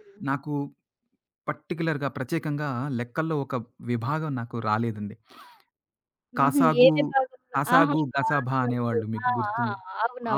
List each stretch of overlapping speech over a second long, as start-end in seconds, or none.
7.5-9.7